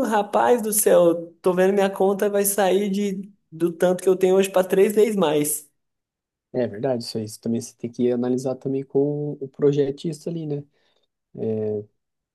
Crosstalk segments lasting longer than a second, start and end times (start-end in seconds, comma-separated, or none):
none